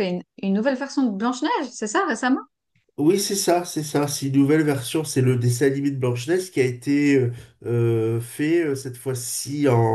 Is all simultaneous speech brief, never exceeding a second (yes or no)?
yes